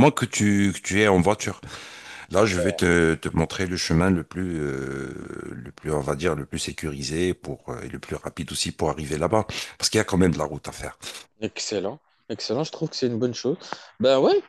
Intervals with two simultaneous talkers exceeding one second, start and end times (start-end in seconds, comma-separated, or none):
none